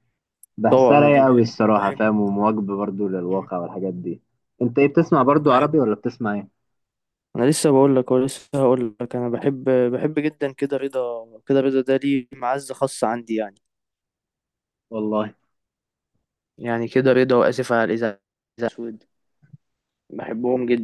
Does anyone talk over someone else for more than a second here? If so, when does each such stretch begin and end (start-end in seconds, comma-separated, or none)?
0.7-2.1